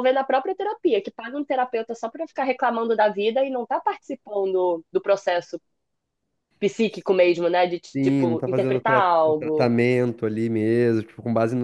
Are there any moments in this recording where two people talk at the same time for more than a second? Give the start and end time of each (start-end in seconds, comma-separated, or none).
7.9-9.7